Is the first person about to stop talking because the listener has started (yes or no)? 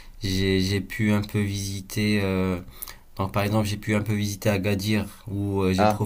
no